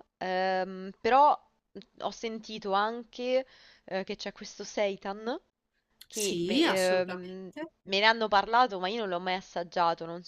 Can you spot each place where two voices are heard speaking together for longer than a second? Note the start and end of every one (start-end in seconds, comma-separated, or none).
6.1-7.5